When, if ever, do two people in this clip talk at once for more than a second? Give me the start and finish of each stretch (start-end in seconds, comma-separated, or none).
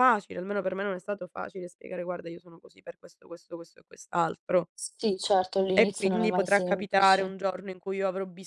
5.8-7.3